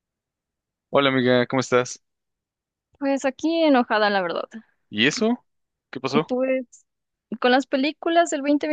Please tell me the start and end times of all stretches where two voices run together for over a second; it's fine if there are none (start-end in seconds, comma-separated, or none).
none